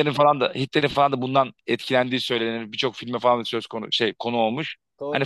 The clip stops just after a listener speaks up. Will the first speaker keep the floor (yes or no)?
yes